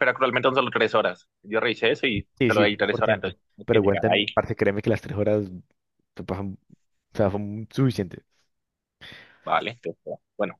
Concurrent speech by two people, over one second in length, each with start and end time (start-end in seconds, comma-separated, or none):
2.4-4.3